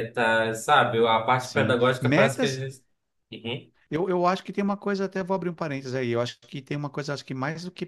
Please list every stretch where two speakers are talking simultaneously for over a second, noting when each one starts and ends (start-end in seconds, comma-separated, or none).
1.4-2.7